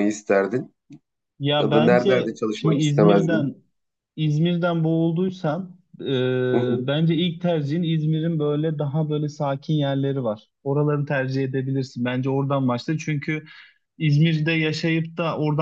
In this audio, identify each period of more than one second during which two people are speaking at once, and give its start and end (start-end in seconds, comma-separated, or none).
1.6-3.5